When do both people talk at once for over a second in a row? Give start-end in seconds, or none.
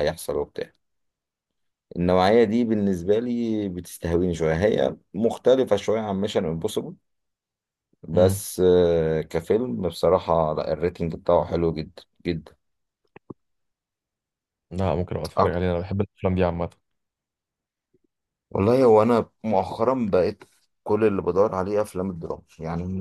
none